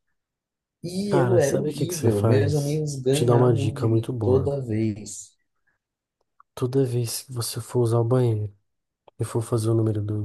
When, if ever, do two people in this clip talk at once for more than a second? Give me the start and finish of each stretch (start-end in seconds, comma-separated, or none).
1.1-4.5